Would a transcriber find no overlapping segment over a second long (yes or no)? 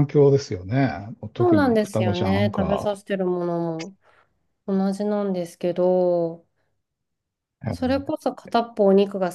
no